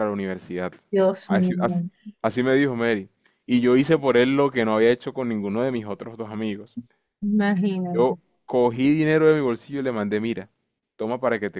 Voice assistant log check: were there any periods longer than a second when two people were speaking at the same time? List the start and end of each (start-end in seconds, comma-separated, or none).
none